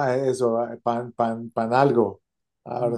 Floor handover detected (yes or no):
yes